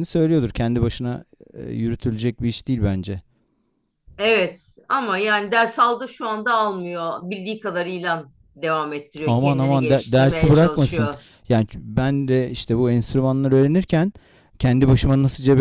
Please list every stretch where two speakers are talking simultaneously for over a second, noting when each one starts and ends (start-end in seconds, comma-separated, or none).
9.2-11.1